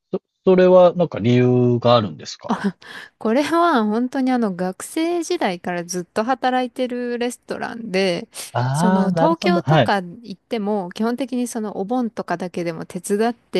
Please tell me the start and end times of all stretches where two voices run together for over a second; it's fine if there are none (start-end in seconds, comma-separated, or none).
8.7-9.9